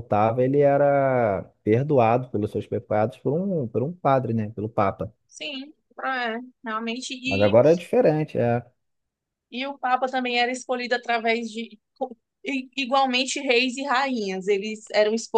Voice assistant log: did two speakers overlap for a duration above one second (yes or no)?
no